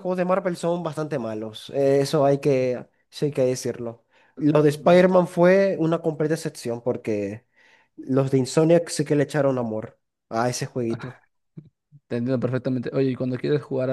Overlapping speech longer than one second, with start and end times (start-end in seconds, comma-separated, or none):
none